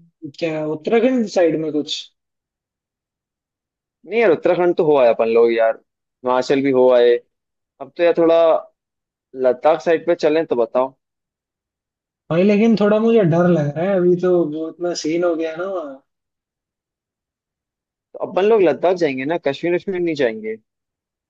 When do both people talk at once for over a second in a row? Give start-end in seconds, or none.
none